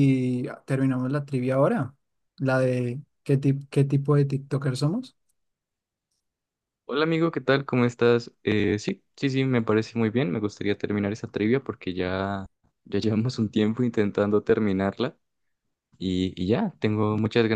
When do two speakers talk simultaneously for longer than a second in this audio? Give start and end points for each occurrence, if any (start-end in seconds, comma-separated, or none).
none